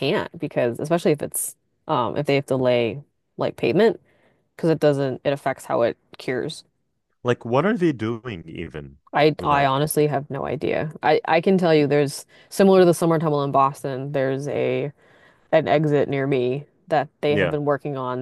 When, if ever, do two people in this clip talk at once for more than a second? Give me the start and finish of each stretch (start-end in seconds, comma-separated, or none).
none